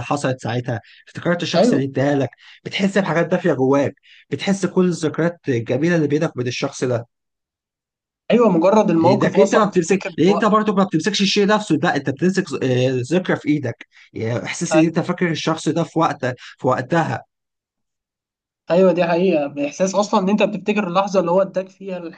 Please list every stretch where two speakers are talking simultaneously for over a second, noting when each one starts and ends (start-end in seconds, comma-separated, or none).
9.0-10.5